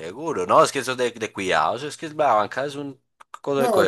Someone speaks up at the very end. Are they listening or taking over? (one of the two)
taking over